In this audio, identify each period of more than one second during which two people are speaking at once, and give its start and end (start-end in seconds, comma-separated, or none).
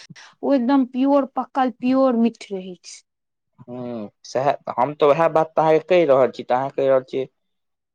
none